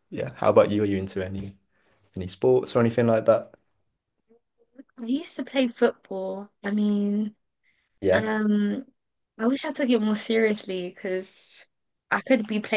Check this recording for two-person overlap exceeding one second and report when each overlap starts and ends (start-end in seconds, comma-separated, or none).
none